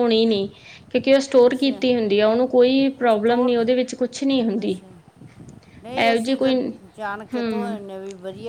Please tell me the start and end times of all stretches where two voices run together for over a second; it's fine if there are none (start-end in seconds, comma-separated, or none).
none